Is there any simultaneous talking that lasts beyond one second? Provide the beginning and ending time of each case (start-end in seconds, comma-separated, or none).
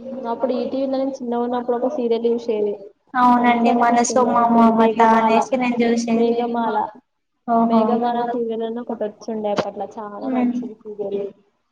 3.4-5.4